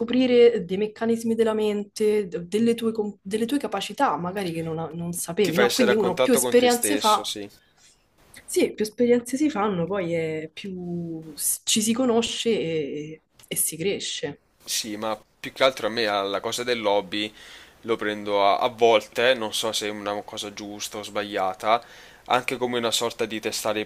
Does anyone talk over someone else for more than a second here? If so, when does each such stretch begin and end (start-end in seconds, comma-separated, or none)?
5.4-7.3